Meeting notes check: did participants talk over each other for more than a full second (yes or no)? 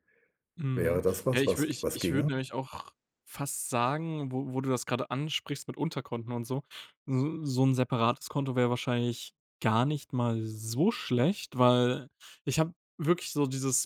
yes